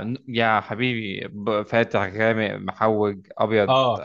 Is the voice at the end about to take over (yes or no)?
yes